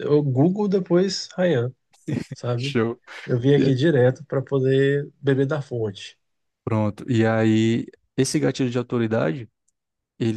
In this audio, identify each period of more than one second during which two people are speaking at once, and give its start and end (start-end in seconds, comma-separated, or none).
none